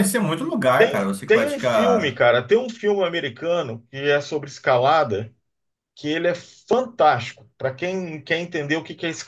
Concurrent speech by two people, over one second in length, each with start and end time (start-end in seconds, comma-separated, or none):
0.8-2.2